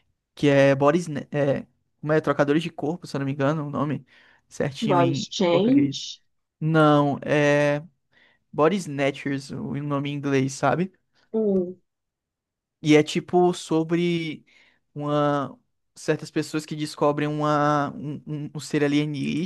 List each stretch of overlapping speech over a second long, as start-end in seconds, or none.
4.8-6.1